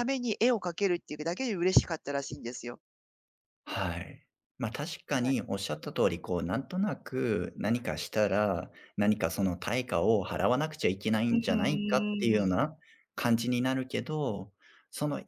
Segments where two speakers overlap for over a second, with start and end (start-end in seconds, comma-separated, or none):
11.3-12.5